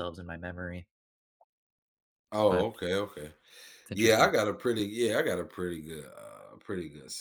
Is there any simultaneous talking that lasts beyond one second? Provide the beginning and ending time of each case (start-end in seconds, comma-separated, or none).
none